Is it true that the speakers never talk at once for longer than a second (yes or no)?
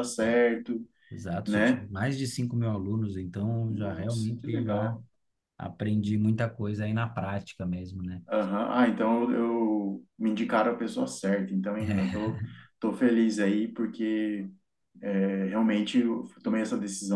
no